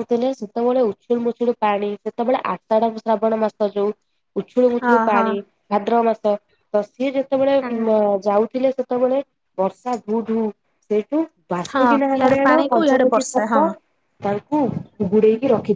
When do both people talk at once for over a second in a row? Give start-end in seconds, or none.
11.7-13.6